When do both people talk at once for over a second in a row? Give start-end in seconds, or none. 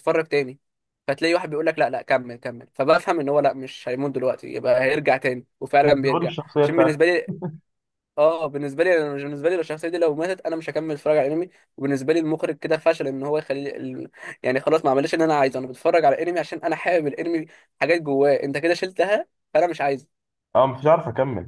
5.9-7.1